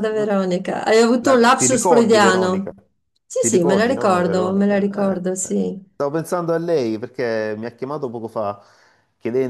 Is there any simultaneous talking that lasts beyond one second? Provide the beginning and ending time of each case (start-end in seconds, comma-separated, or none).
1.2-2.7, 3.4-5.6